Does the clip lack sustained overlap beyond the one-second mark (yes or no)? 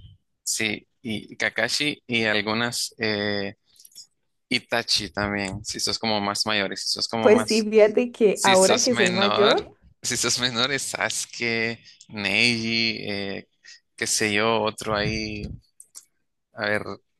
no